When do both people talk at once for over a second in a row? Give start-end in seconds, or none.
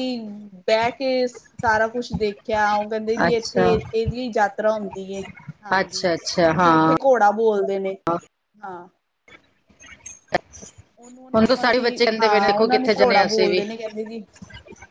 11.3-13.6